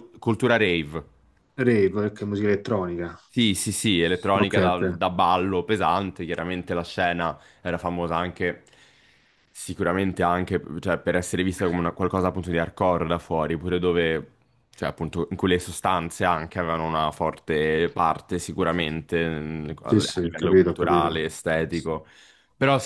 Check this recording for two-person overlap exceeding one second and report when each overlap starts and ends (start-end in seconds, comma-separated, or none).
19.9-21.2